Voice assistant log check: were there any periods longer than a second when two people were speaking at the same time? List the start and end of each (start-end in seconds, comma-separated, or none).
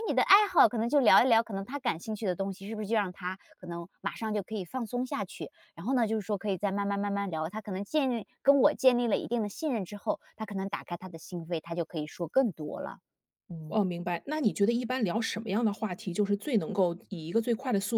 none